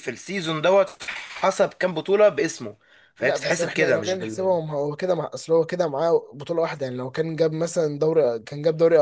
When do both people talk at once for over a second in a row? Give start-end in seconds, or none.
3.2-4.5